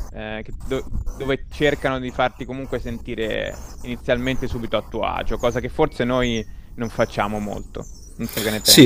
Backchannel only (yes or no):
no